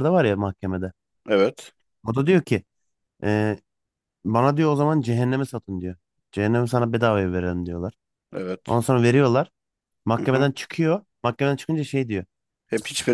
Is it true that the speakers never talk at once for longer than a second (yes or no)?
yes